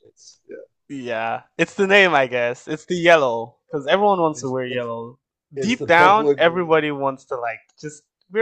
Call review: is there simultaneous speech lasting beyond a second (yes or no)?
yes